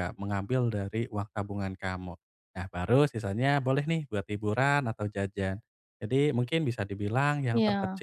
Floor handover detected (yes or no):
no